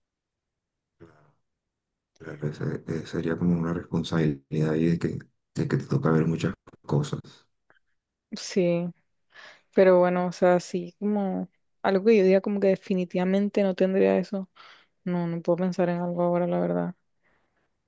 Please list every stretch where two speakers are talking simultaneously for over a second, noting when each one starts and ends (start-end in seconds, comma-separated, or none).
none